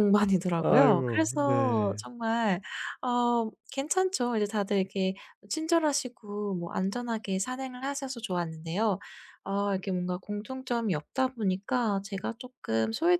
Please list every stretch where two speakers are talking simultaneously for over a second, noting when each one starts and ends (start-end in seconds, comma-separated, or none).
0.6-2.0